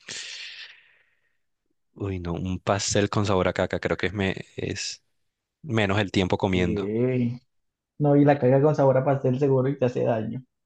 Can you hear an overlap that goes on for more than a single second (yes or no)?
no